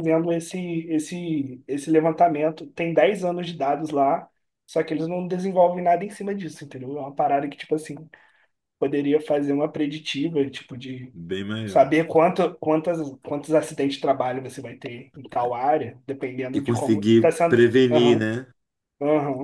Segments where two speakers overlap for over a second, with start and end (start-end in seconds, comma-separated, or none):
16.5-18.3